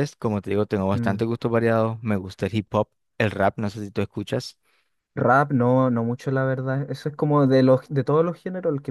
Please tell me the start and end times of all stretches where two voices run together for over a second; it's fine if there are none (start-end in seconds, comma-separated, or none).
none